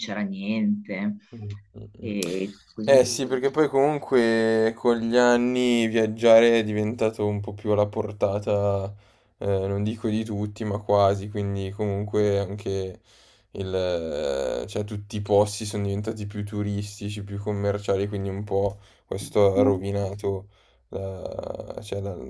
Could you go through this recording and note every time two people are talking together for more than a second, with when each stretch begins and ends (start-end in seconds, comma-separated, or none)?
none